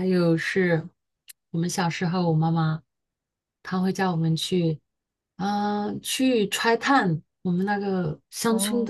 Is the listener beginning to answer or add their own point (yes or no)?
no